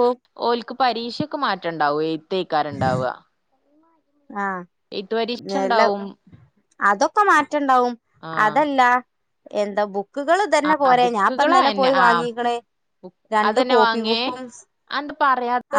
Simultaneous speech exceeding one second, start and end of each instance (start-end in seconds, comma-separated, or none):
10.7-12.2